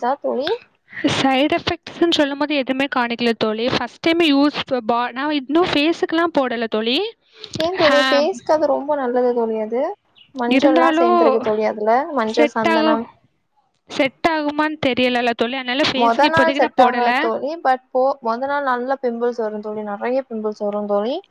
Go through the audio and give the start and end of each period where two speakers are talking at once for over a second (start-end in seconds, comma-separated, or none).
16.0-17.5